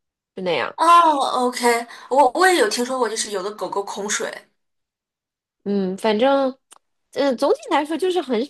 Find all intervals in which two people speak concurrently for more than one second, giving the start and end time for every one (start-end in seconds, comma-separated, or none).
none